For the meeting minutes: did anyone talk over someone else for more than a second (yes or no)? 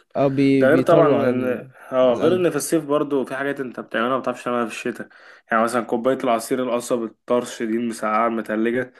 yes